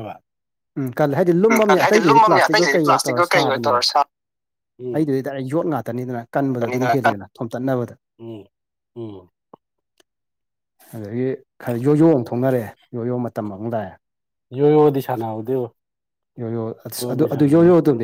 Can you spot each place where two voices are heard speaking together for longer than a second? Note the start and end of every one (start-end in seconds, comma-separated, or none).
1.5-3.8